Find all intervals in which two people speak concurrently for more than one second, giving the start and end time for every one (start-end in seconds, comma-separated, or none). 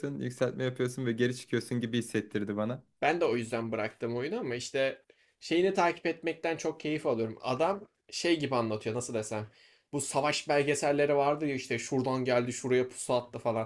none